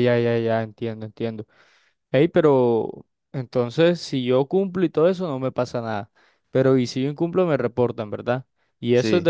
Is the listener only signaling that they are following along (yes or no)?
yes